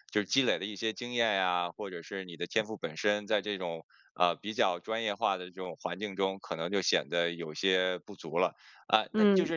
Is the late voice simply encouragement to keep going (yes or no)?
yes